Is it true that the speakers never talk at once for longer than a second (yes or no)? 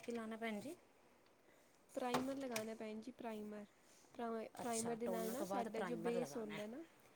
no